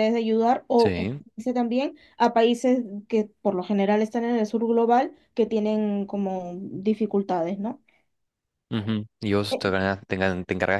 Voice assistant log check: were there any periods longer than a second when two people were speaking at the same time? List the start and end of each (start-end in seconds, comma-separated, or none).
none